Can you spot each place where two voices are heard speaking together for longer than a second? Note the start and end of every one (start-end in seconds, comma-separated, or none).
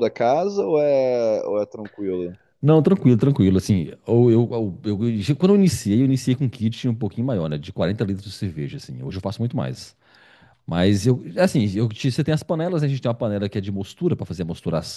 none